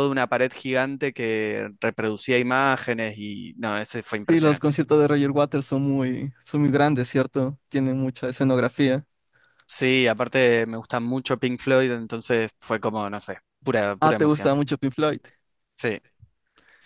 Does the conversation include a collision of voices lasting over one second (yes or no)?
no